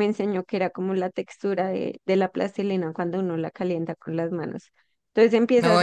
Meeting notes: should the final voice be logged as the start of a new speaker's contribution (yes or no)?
no